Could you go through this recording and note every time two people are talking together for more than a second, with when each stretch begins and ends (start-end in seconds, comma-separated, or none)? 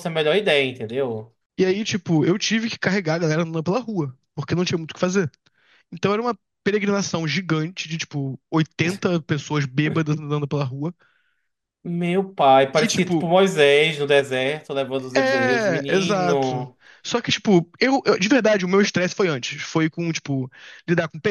15.2-16.8